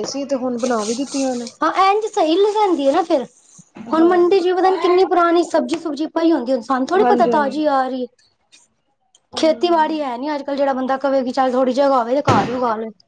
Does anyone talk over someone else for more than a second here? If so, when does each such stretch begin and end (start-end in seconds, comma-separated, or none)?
none